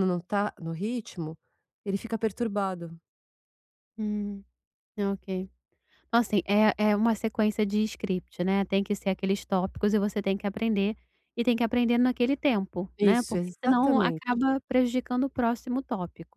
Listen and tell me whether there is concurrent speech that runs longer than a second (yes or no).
yes